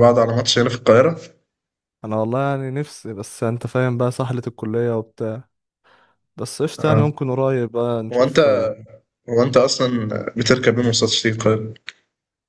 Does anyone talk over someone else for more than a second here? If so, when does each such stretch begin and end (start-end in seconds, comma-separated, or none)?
none